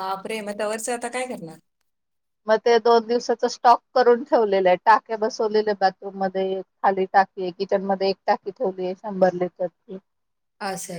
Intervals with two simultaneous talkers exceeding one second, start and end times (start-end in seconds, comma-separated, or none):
none